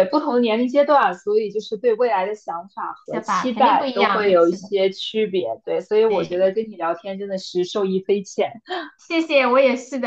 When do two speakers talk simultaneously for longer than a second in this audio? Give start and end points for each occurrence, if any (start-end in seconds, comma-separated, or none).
3.0-4.7